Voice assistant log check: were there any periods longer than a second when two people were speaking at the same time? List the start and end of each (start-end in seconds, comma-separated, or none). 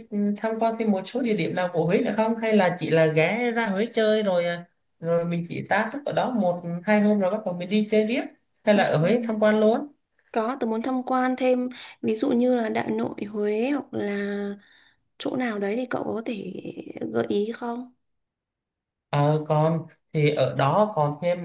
none